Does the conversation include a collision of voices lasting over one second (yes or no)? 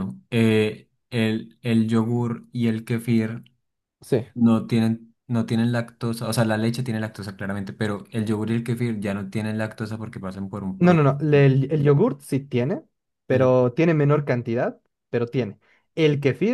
no